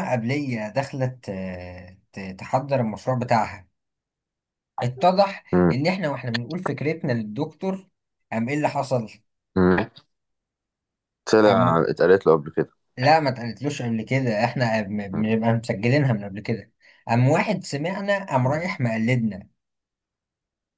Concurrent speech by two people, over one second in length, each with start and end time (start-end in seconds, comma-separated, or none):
none